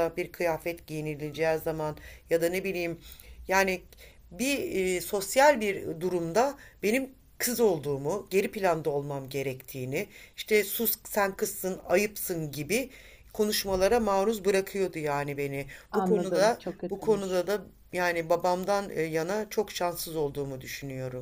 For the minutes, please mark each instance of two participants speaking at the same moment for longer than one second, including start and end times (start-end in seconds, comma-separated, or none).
15.9-17.5